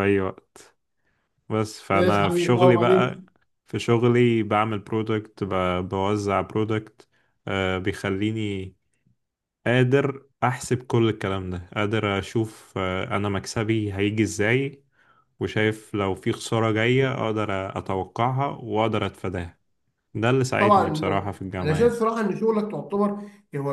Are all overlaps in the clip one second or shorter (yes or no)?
no